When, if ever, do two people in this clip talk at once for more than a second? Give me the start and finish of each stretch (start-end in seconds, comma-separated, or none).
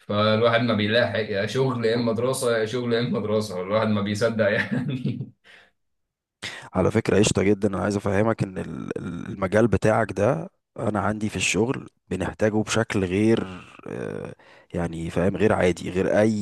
none